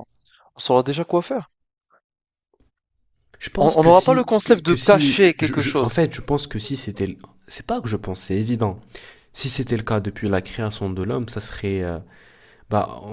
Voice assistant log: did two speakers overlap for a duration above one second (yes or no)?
yes